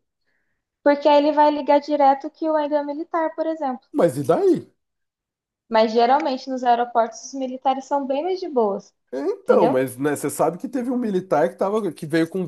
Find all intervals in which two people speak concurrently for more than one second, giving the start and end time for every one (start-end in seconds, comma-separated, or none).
none